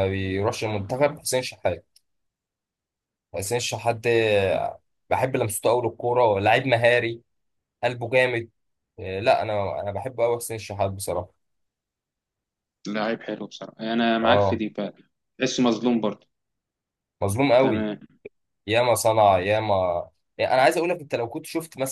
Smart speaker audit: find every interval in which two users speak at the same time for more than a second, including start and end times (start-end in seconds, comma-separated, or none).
none